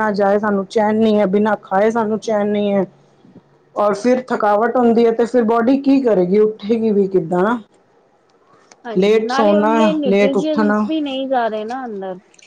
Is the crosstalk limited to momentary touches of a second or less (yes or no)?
no